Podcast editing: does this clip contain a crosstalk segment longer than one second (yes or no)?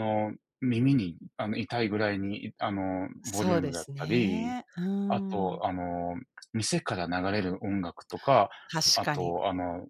yes